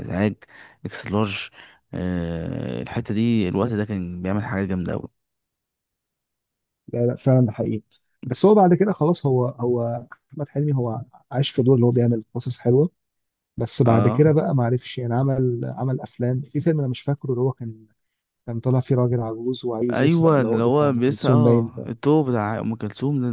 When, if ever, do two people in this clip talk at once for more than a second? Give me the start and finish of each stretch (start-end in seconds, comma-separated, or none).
19.9-21.7